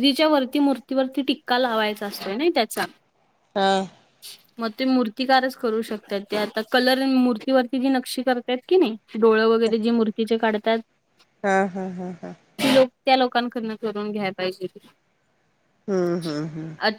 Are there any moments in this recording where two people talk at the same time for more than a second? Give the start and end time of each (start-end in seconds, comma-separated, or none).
none